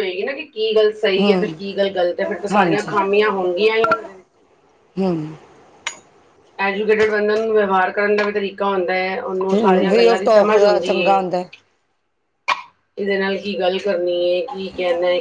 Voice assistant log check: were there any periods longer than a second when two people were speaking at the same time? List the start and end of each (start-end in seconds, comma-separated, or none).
9.9-11.2